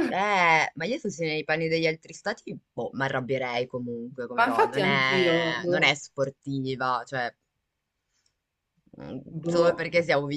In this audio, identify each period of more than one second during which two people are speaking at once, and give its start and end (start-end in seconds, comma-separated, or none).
4.5-6.0